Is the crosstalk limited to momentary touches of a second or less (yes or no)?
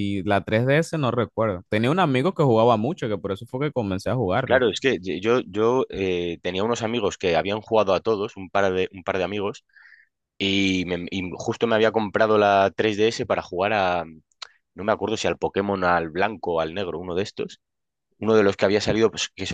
yes